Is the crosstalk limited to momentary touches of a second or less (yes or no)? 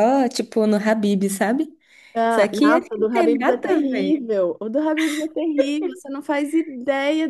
no